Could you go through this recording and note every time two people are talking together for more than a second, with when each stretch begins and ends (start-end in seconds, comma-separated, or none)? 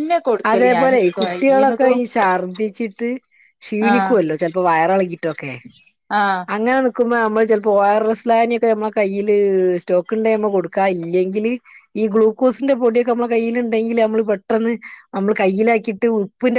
0.5-2.0